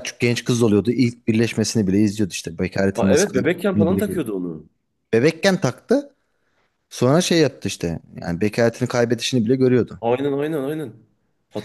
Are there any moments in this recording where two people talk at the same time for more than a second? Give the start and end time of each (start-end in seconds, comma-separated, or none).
2.9-4.2